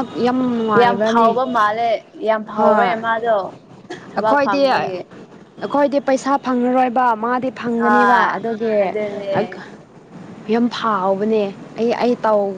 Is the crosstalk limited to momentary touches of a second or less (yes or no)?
yes